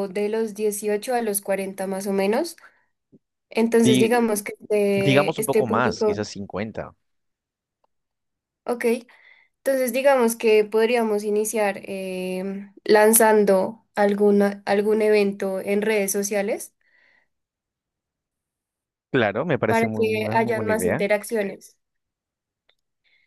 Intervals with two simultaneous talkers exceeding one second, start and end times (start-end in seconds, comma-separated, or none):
5.0-6.3, 19.7-21.1